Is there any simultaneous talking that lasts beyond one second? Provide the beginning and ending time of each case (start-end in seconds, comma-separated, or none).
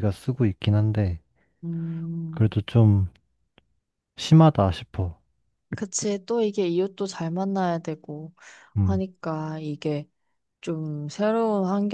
none